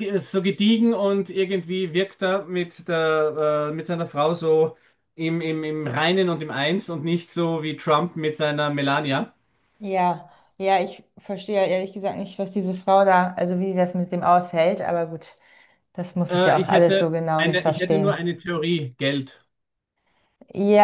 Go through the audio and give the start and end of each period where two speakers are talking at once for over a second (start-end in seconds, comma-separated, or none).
16.3-18.3